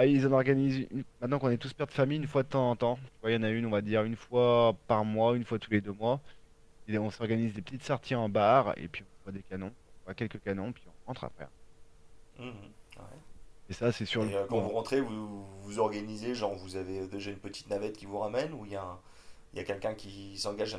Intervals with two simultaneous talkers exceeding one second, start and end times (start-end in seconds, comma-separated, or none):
none